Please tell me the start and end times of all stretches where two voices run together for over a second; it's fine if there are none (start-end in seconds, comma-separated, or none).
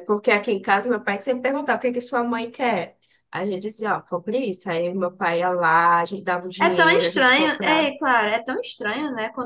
6.6-7.9